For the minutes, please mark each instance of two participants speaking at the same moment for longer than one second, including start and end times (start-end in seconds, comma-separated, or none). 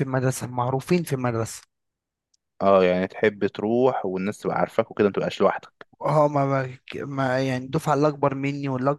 none